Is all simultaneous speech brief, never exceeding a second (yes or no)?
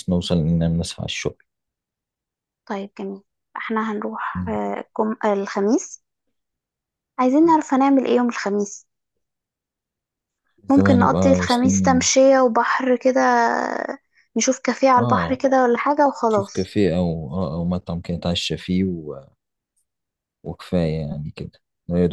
no